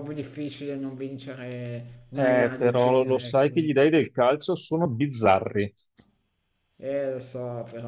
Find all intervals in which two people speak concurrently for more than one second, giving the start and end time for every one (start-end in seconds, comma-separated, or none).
2.1-3.5